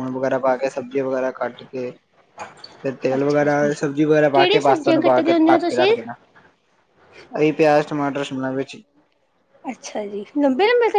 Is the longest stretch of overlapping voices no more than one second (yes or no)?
no